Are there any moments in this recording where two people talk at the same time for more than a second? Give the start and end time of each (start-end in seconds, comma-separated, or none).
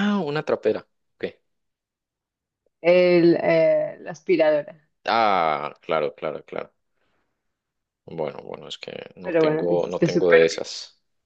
9.2-10.6